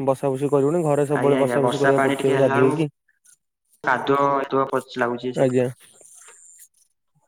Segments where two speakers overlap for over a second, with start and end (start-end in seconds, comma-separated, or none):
1.2-2.7